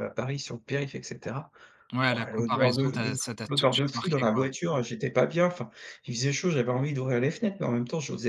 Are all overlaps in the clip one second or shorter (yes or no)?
no